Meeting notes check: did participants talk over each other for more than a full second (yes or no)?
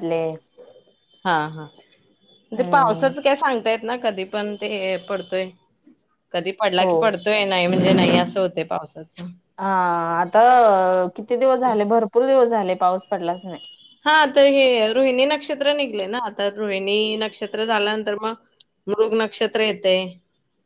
no